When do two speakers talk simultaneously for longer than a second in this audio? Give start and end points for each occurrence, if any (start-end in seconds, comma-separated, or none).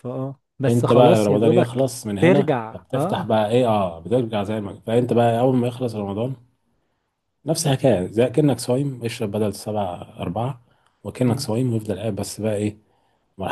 0.7-3.4